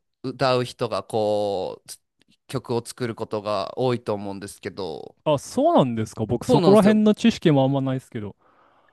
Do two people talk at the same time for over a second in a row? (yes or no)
no